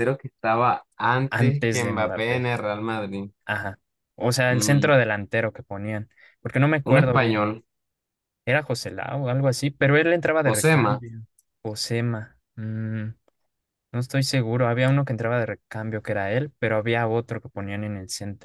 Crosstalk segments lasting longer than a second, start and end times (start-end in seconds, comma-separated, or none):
1.3-2.5